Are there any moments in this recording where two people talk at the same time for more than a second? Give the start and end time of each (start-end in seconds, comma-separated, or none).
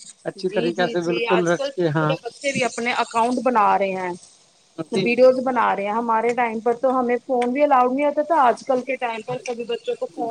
0.5-2.1